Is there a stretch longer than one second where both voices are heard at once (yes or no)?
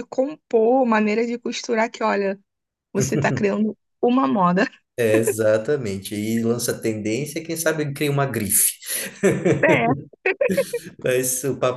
no